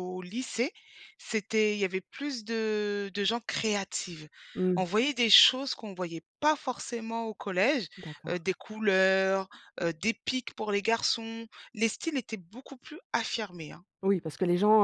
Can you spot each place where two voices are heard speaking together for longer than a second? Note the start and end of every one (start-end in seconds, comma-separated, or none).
none